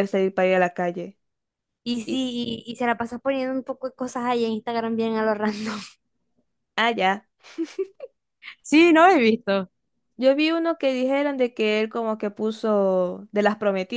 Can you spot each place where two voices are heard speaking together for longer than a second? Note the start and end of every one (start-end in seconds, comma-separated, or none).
none